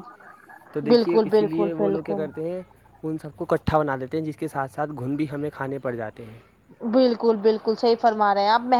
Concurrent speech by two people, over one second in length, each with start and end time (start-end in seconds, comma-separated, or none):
0.9-2.2